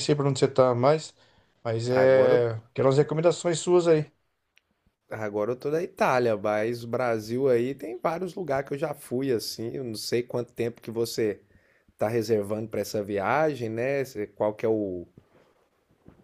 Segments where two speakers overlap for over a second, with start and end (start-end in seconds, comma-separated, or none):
none